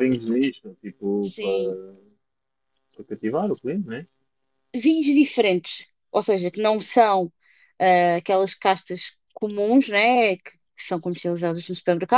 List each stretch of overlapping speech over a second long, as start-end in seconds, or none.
none